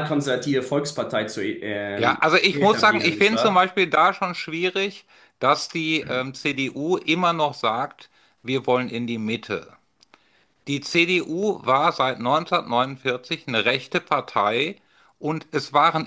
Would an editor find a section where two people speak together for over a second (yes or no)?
yes